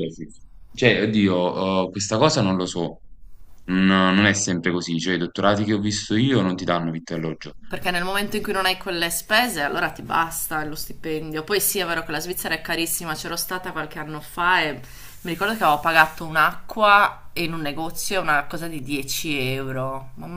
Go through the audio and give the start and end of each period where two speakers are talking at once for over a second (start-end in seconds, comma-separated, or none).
none